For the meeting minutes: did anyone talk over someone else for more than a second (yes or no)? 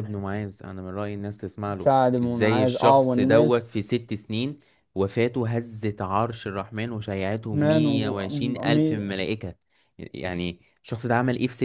yes